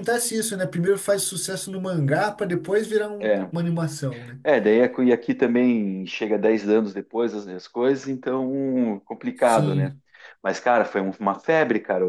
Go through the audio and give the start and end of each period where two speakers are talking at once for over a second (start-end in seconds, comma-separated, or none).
none